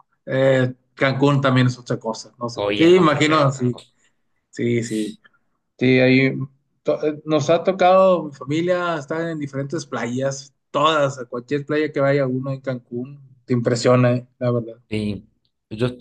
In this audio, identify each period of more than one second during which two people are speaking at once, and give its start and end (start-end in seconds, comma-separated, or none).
2.5-3.8